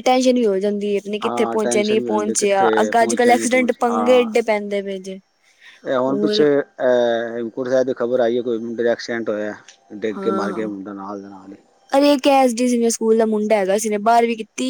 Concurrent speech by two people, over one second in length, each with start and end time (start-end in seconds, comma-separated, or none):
1.2-4.3